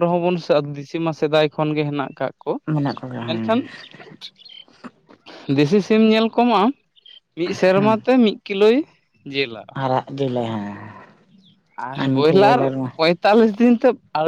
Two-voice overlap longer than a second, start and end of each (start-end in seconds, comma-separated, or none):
none